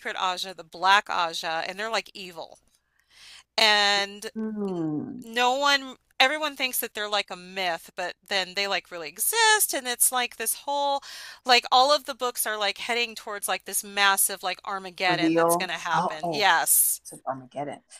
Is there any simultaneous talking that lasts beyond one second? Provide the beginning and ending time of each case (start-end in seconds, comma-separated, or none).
15.1-16.5